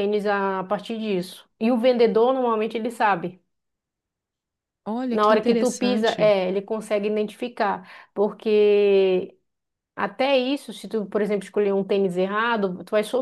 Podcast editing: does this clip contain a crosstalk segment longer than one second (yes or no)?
yes